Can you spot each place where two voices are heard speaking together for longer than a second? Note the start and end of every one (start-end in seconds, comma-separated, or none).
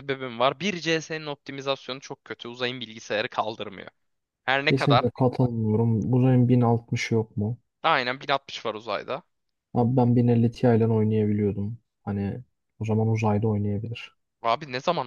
none